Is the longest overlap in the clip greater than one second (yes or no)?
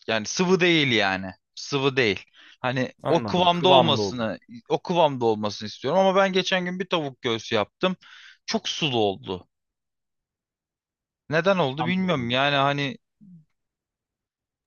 yes